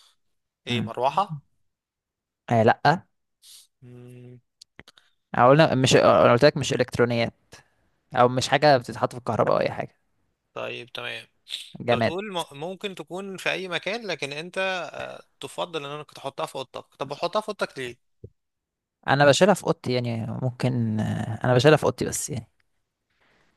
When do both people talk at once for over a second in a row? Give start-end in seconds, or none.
none